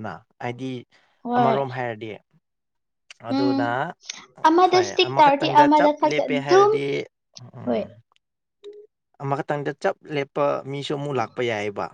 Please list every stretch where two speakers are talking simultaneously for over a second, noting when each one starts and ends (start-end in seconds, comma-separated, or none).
4.7-6.7